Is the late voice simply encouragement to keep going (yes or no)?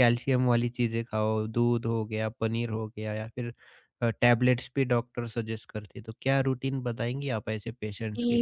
no